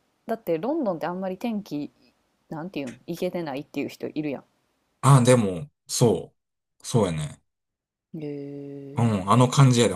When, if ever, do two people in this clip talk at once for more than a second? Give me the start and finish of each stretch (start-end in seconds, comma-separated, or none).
none